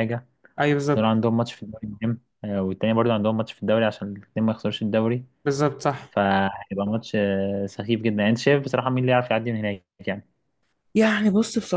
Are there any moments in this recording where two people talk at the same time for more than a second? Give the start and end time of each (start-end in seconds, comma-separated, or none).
none